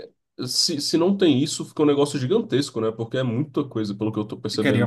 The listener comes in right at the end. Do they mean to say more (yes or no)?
yes